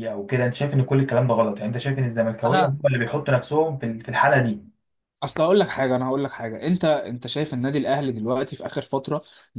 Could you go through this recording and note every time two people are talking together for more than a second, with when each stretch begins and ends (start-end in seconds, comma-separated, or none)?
none